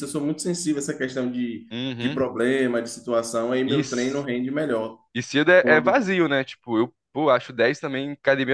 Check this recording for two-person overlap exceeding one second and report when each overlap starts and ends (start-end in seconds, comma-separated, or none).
none